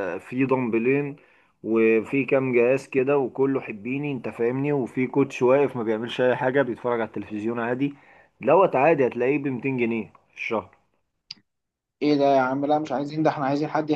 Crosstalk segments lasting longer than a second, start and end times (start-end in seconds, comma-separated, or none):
none